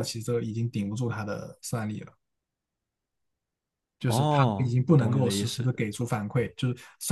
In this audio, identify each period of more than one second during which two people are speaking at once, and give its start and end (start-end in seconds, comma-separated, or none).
4.0-5.7